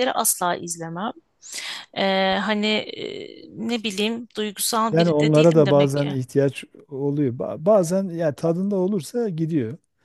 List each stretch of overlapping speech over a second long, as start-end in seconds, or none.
4.9-6.2